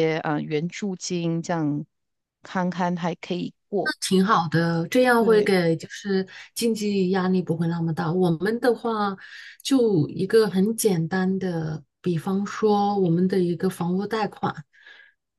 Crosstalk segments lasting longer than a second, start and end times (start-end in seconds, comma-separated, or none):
none